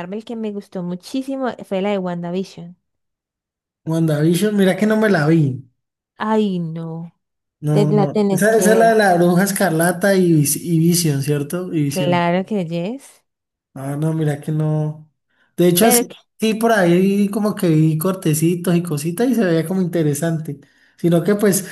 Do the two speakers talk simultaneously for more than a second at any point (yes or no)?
yes